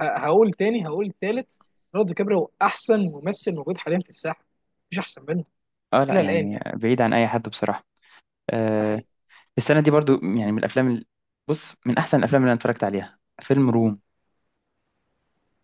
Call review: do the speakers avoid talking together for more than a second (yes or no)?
yes